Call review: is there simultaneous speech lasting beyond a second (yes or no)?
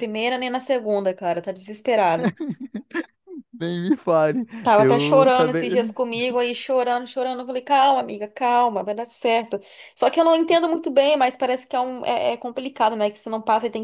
yes